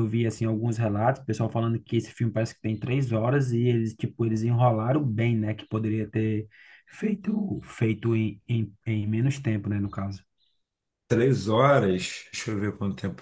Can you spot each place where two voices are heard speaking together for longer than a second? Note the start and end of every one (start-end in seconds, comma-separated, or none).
none